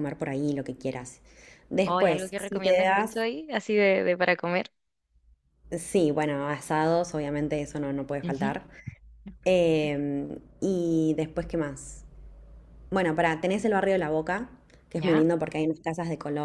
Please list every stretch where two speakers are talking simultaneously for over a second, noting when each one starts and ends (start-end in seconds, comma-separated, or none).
1.9-3.2